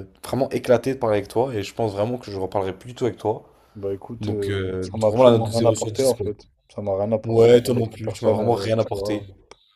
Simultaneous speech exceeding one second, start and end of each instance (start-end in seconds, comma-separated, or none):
4.2-6.3, 7.2-9.2